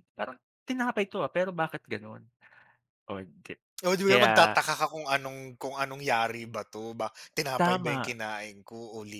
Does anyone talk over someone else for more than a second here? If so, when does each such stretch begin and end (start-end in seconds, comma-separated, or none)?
none